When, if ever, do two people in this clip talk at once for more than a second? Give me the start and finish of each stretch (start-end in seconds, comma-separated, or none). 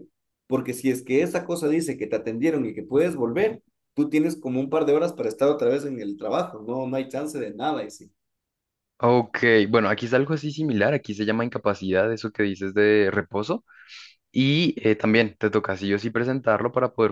none